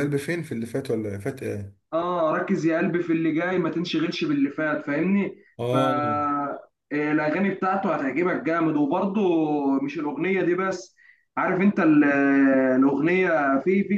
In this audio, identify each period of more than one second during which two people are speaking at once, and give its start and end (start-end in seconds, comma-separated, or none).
none